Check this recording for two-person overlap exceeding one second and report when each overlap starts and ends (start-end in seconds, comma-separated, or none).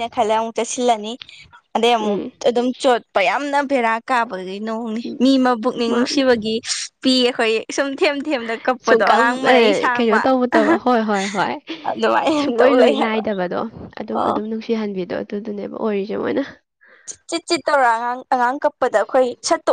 8.8-10.2